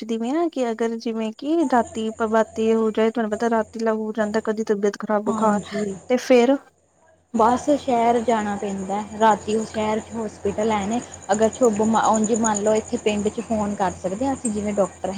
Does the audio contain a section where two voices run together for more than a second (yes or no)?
no